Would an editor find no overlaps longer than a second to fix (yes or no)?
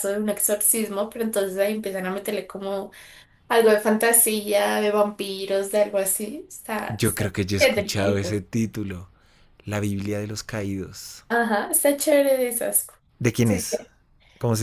no